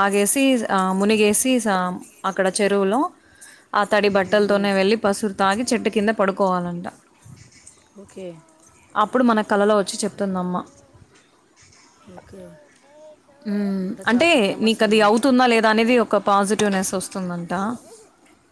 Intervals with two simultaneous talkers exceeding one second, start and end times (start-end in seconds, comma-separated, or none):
none